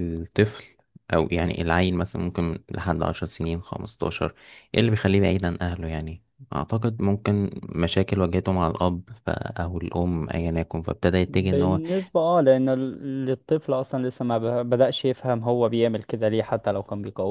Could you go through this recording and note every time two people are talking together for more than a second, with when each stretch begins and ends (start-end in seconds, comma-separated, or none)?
none